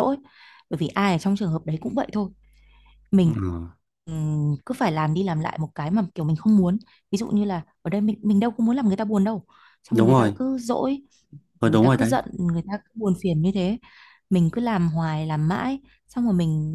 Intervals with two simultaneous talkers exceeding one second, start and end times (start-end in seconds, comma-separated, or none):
none